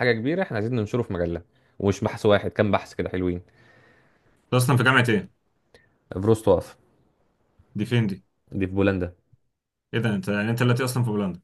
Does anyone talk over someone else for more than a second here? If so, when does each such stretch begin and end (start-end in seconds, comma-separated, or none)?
none